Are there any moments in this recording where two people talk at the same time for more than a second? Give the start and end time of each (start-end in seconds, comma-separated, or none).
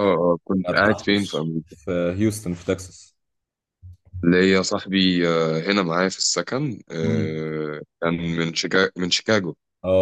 0.5-1.8